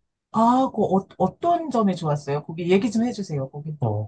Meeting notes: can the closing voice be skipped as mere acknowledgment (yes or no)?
no